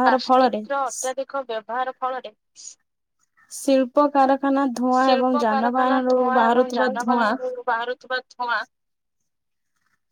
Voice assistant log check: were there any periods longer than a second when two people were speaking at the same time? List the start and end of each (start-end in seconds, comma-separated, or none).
5.0-7.3